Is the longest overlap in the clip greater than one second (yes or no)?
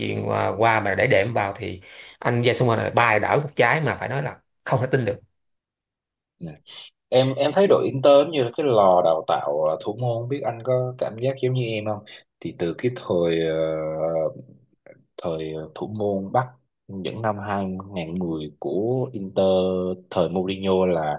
no